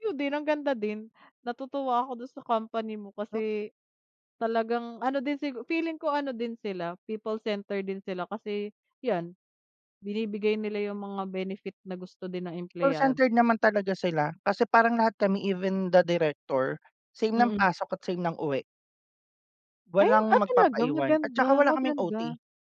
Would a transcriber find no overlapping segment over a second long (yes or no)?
no